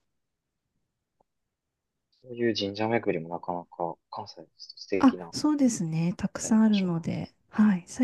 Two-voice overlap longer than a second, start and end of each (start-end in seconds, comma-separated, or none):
none